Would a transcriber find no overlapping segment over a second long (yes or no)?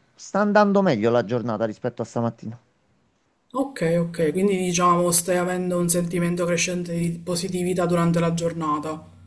yes